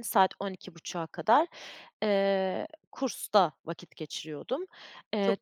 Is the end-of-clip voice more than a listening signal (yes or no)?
yes